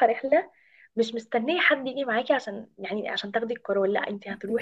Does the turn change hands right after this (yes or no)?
no